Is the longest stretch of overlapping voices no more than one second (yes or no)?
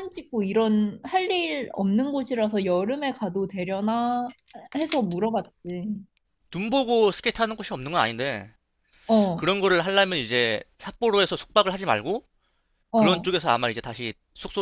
yes